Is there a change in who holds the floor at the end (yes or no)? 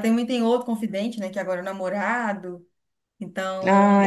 no